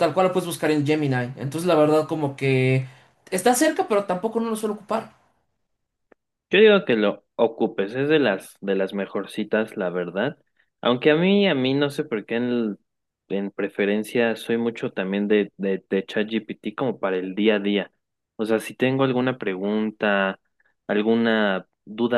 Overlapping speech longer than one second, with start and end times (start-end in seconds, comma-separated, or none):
none